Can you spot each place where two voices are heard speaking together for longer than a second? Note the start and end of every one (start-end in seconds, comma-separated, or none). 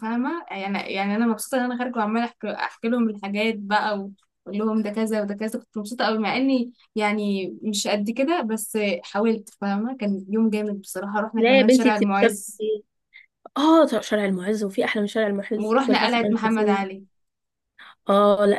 11.4-12.6, 15.6-16.9